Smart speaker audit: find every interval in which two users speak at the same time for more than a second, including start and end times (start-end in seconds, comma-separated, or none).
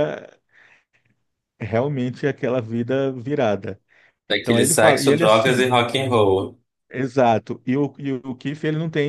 4.4-5.7